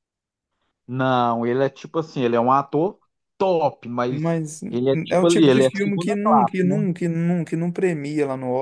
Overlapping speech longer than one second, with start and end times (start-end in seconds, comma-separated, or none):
5.1-6.8